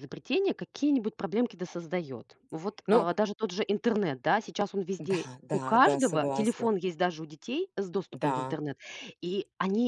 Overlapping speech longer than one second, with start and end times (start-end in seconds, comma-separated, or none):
5.0-6.7